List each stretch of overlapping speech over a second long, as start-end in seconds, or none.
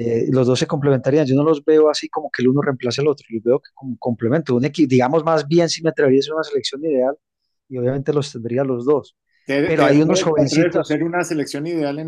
9.7-11.0